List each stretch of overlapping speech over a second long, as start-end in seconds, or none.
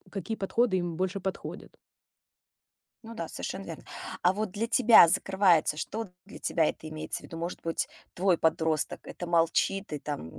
none